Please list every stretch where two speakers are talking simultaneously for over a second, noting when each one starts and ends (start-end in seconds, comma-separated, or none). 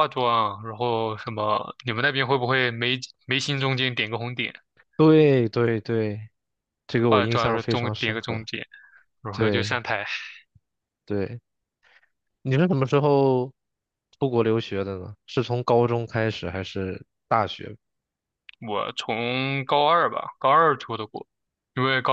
7.0-8.4